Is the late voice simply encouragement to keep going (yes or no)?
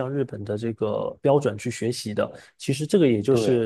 yes